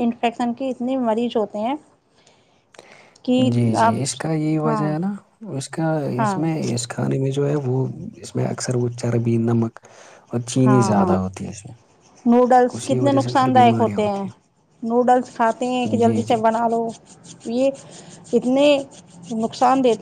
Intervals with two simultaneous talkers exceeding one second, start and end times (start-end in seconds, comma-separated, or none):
12.7-14.2